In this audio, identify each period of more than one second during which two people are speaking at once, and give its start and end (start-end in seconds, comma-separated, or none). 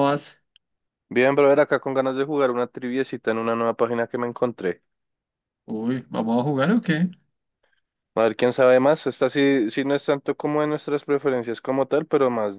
none